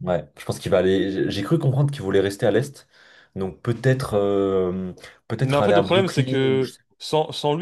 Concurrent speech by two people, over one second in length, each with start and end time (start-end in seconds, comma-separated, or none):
5.4-6.8